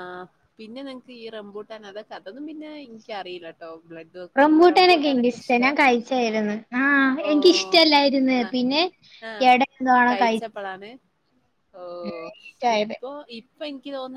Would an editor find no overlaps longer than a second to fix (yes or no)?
no